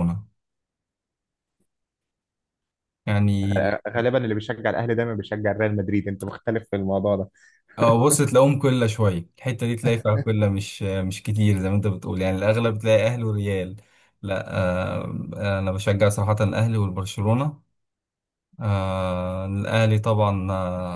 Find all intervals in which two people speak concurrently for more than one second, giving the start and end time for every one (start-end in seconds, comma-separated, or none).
none